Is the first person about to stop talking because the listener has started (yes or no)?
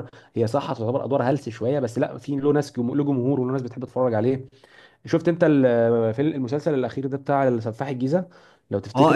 yes